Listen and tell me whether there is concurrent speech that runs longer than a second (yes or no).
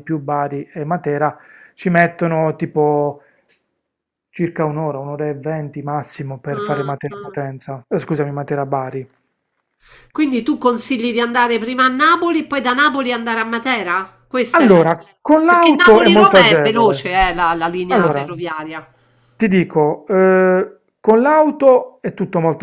yes